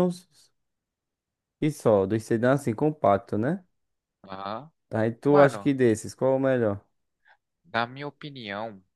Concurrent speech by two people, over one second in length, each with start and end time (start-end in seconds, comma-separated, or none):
none